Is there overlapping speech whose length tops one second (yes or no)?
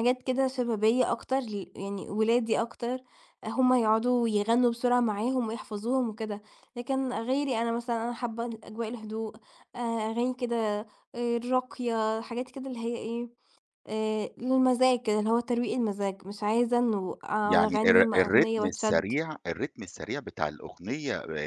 yes